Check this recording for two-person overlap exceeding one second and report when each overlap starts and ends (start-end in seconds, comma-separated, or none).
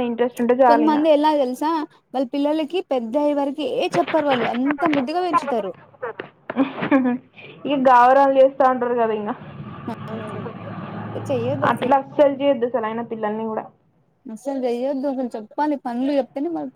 none